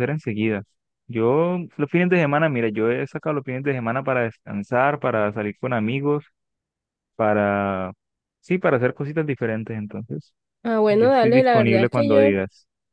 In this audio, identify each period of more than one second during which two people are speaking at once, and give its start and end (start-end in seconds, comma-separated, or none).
10.9-12.4